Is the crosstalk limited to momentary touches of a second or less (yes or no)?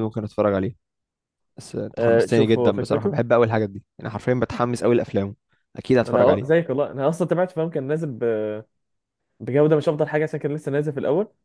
no